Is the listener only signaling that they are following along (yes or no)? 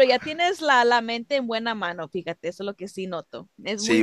no